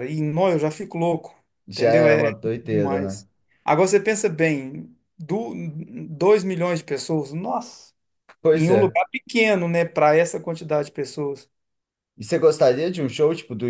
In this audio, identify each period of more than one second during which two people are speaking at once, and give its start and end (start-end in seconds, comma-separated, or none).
1.7-3.2